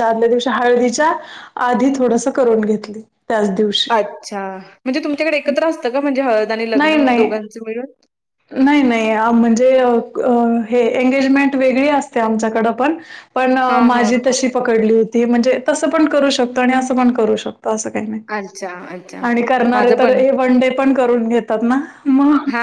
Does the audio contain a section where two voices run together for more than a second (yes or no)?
no